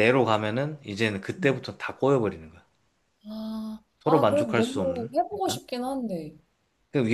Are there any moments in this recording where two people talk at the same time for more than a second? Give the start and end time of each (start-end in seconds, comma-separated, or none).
4.0-5.6